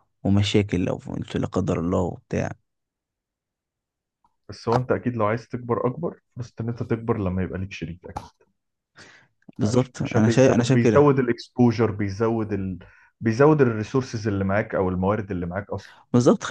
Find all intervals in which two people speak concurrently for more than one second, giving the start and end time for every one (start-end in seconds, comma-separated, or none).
9.6-11.2